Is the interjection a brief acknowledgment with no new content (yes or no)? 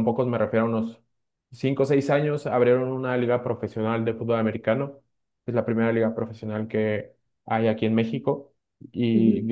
yes